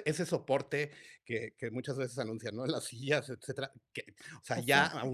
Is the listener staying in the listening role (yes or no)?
yes